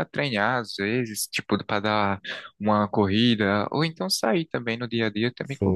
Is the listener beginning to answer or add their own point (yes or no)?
yes